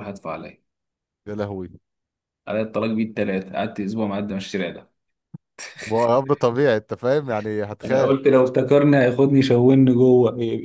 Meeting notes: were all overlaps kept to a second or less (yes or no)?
yes